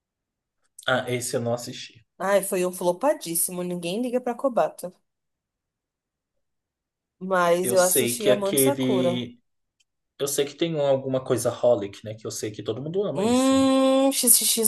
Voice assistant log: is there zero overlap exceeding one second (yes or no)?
no